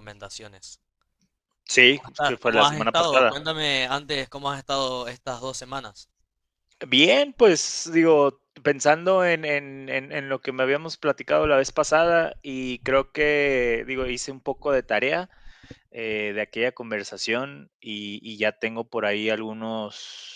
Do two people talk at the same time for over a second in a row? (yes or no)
yes